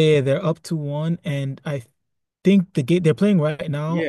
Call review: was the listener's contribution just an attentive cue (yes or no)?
no